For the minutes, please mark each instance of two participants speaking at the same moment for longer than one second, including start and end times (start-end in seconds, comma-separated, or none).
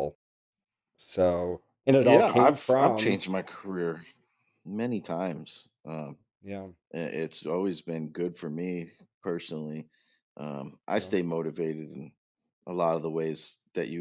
2.0-3.2